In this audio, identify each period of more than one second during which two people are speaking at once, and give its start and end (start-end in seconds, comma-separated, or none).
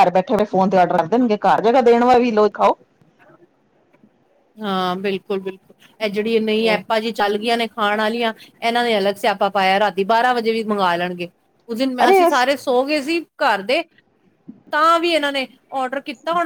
none